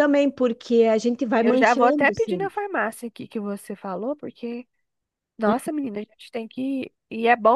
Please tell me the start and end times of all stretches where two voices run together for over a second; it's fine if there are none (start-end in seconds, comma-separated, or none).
1.4-2.6